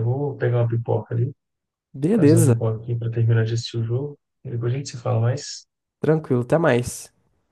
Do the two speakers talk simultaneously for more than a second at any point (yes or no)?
no